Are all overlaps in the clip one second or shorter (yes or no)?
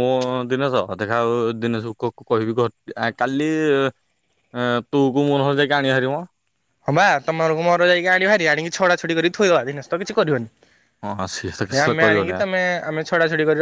yes